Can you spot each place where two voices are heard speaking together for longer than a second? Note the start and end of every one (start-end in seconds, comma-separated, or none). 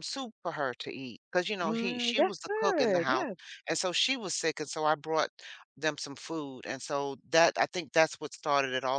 1.6-3.2